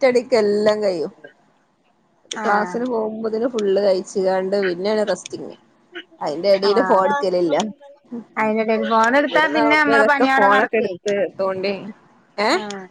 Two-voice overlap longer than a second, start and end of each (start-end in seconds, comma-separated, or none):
9.2-10.8